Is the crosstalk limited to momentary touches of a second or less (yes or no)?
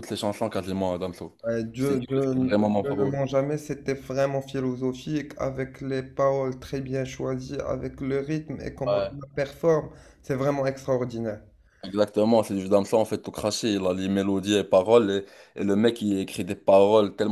no